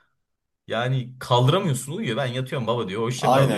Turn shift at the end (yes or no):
yes